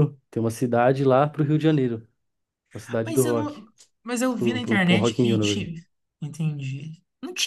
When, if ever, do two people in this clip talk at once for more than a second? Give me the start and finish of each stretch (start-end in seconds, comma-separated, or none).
4.4-5.7